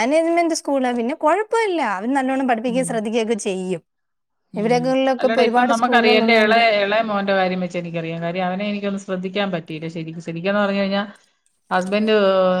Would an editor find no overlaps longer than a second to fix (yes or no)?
no